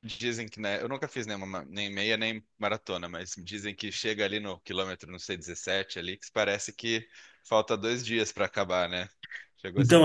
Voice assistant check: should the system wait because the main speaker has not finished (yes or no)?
no